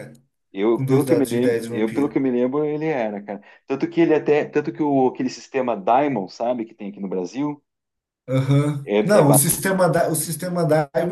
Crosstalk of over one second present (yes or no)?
yes